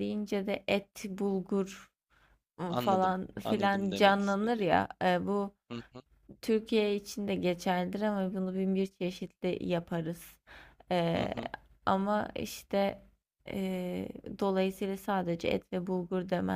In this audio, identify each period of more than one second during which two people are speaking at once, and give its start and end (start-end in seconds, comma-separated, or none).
2.7-4.7